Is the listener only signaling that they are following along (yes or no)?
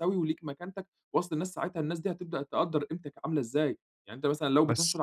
yes